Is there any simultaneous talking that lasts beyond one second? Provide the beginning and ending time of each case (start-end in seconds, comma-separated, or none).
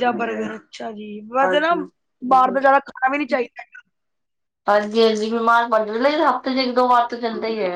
none